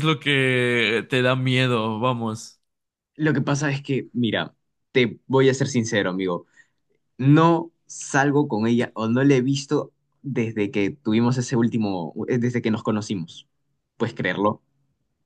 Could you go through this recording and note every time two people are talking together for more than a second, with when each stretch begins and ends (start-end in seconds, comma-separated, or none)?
none